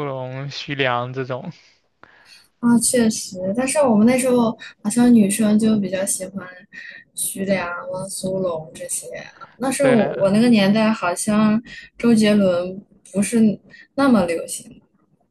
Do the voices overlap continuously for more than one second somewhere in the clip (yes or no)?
no